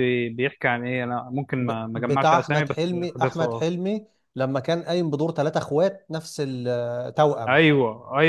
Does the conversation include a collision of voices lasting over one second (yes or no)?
yes